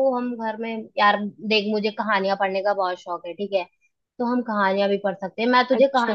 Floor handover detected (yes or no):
no